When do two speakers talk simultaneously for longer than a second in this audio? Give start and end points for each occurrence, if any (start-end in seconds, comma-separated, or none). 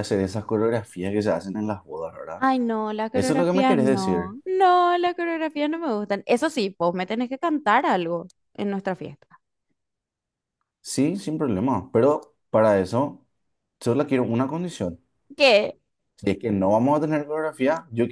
3.1-4.4